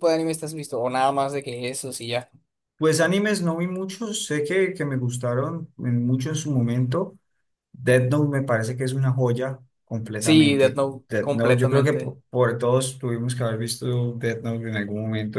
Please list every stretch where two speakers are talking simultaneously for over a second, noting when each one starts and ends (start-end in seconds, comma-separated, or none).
10.2-12.1